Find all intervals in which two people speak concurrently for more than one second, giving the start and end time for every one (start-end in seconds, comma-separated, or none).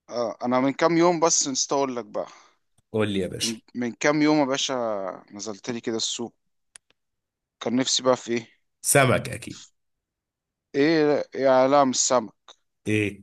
none